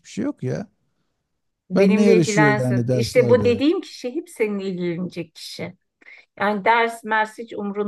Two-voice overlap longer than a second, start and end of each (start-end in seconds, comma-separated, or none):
1.7-3.6